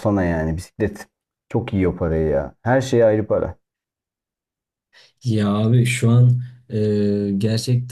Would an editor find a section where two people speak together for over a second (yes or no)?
no